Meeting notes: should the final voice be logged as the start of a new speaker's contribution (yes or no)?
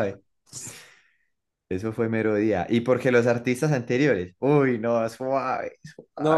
yes